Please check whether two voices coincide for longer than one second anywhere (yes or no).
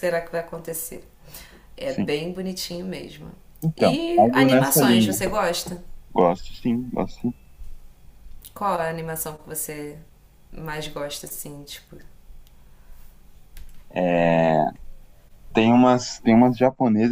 yes